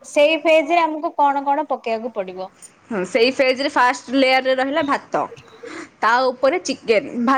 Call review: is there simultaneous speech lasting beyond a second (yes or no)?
no